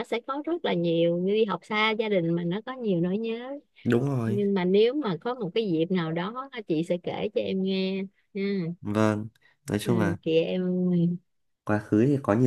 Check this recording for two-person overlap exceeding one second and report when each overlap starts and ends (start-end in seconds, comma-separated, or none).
none